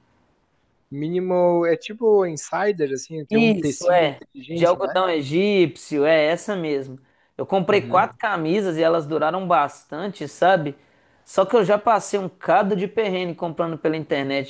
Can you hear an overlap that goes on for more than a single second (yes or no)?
yes